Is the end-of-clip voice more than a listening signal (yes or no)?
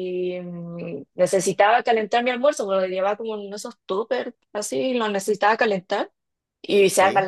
no